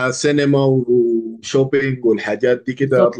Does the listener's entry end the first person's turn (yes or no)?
yes